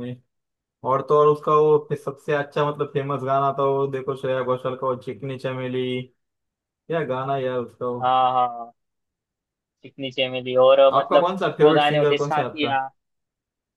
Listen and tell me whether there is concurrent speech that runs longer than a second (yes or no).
yes